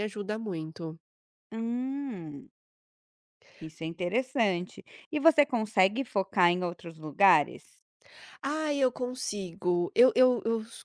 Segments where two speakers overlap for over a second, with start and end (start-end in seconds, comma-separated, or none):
none